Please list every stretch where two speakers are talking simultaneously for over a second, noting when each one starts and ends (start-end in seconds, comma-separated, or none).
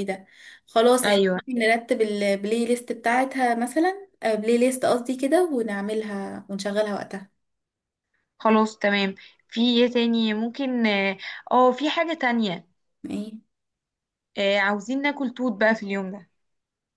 none